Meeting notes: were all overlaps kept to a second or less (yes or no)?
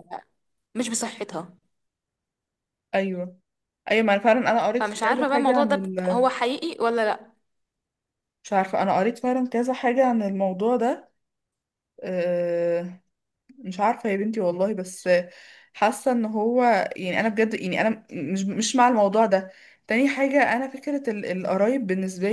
no